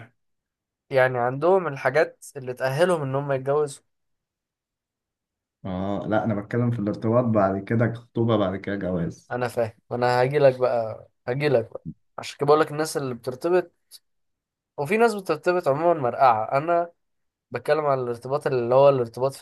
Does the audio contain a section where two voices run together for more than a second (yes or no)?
no